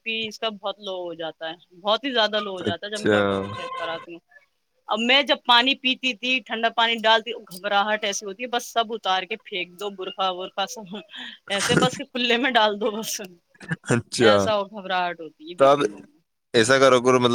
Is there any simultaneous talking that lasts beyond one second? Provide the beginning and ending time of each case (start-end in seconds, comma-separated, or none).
none